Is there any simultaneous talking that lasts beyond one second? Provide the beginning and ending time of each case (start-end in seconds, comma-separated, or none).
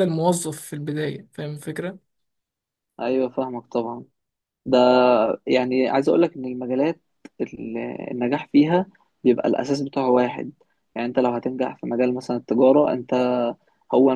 none